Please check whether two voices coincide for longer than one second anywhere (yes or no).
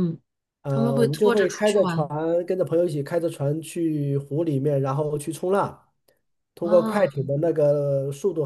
yes